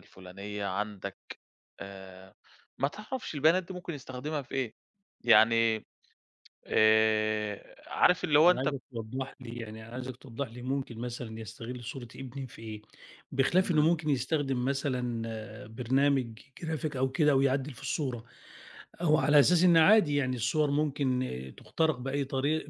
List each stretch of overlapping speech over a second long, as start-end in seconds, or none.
none